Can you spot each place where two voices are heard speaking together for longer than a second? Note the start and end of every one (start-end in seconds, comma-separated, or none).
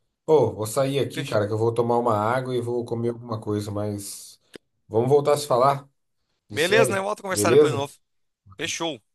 6.5-7.9